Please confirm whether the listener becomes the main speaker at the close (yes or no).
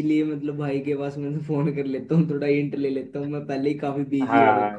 yes